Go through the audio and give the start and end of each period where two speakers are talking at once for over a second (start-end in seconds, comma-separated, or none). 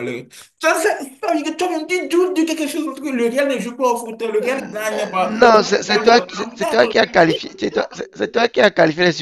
none